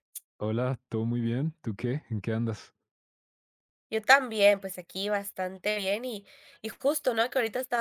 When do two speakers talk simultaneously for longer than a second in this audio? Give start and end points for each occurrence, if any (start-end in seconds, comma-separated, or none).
none